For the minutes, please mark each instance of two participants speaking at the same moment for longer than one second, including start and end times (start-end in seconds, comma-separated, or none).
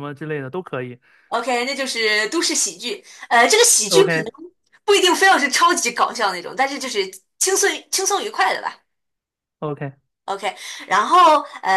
none